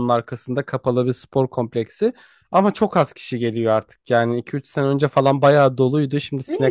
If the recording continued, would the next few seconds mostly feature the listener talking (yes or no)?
yes